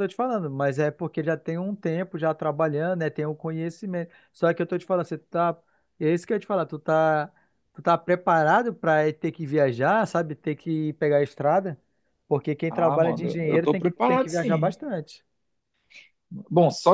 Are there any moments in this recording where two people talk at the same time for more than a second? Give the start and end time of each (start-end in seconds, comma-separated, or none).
12.7-14.7